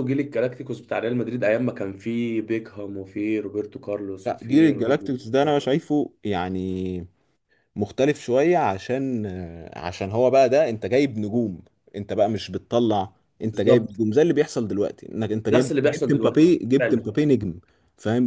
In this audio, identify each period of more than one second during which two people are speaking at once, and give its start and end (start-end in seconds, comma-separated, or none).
4.2-5.5, 15.5-17.1